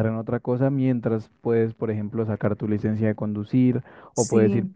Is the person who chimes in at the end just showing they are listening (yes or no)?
yes